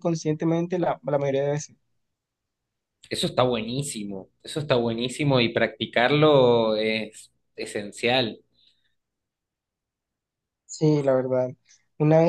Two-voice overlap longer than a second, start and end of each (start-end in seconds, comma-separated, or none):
none